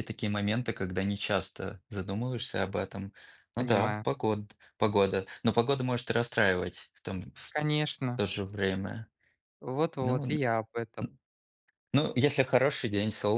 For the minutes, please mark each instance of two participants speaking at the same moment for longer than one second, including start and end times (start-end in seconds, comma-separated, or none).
none